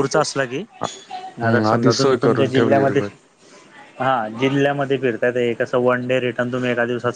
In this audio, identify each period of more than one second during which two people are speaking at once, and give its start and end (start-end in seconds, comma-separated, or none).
1.4-3.0